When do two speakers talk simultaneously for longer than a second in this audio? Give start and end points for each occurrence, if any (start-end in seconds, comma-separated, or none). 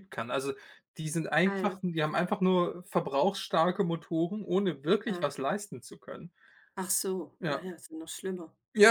none